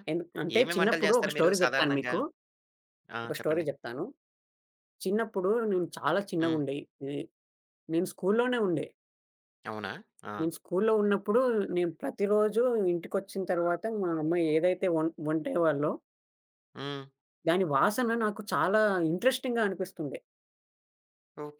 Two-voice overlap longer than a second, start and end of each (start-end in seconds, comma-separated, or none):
0.6-2.1